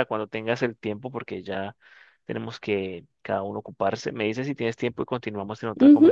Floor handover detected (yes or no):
yes